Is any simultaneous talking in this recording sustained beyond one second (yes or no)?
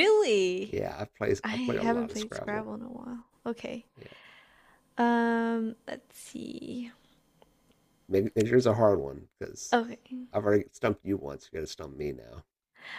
yes